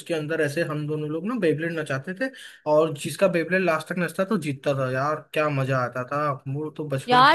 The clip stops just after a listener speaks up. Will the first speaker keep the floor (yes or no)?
no